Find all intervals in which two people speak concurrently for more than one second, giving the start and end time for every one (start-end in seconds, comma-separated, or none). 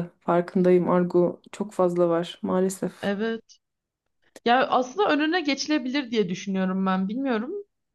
none